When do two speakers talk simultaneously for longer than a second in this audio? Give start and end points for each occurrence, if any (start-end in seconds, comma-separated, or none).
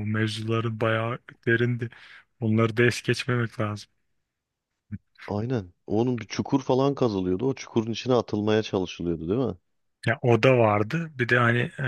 none